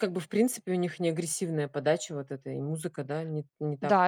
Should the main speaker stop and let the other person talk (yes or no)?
yes